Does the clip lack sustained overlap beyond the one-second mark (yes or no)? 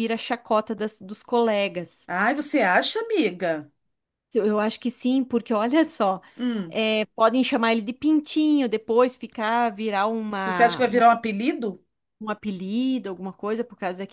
yes